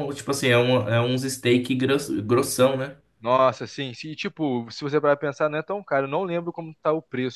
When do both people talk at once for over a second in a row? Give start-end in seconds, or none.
none